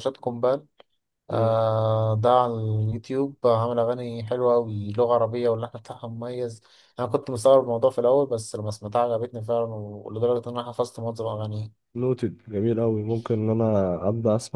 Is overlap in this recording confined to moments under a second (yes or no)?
yes